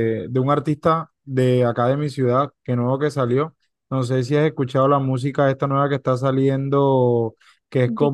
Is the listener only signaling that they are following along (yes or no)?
yes